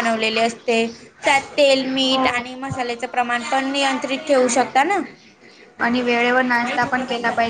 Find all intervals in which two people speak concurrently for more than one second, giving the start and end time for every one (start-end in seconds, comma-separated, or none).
none